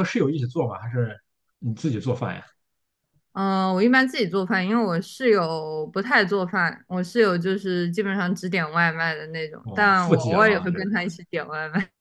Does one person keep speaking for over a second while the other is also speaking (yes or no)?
yes